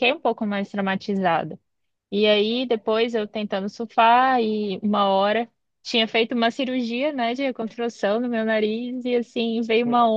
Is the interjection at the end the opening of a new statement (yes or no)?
no